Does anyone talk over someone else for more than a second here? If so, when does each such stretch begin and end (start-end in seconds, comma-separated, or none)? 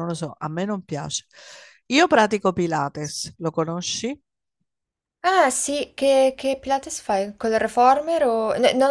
none